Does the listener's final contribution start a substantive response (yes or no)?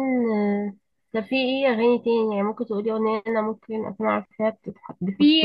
yes